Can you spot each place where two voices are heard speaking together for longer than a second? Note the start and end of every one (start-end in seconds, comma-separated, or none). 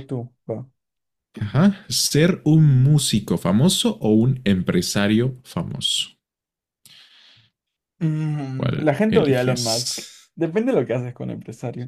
8.6-10.3